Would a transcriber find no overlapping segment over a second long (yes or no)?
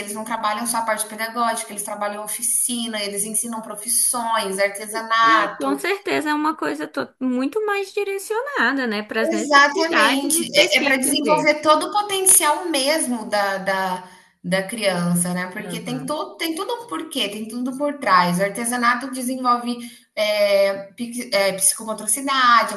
no